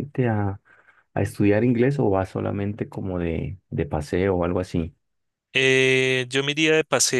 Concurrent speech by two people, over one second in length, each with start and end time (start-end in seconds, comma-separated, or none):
none